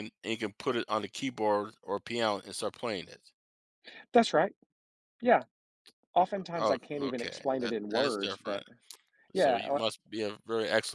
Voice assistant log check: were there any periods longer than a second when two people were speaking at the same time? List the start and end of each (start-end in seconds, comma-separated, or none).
6.6-8.6